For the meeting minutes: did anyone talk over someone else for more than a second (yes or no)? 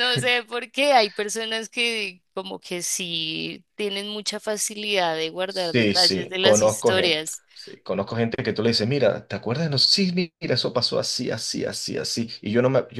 yes